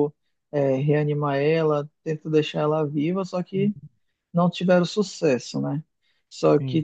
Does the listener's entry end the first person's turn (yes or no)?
no